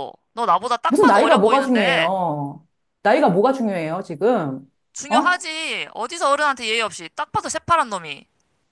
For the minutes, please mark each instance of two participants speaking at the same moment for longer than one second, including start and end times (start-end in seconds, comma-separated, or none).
0.9-2.1